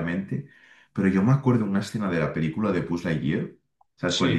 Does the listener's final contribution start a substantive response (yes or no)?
no